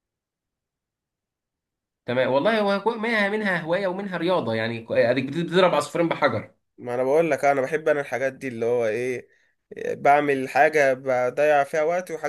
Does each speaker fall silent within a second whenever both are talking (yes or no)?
yes